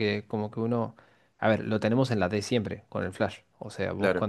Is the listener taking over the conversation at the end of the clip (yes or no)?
no